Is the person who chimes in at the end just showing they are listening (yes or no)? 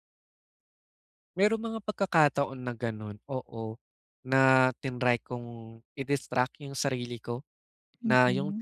yes